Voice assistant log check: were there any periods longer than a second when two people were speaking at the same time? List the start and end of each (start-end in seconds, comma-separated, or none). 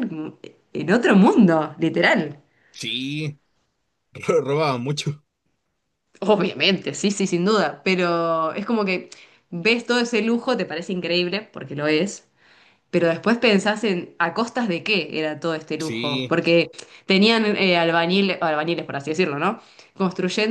none